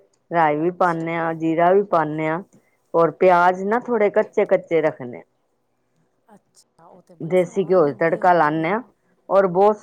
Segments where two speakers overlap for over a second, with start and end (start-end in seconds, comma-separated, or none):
7.3-8.7